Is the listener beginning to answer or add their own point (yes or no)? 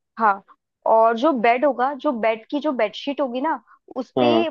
no